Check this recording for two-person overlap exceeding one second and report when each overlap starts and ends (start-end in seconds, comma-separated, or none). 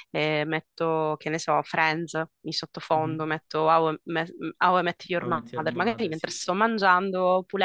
5.2-6.5